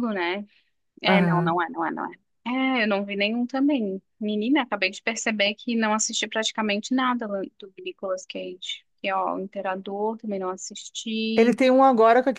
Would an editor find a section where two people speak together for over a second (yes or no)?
no